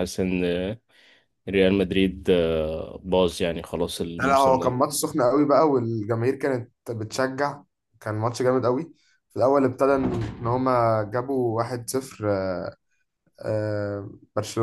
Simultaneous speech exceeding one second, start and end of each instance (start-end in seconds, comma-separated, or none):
none